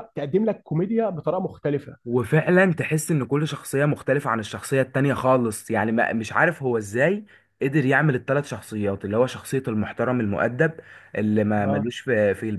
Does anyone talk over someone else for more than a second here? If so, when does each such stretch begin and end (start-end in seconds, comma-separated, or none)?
none